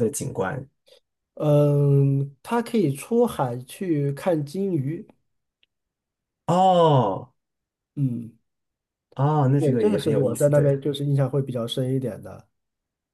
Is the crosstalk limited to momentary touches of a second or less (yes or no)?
no